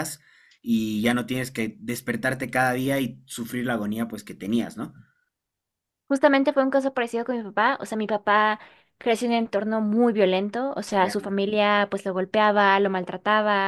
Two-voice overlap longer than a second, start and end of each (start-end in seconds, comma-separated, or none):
none